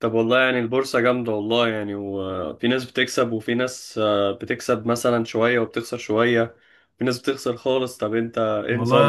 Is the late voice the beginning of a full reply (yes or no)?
yes